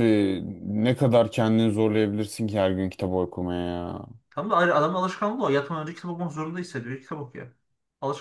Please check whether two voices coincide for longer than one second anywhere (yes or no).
no